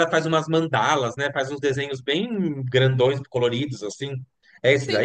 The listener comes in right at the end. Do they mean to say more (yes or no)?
yes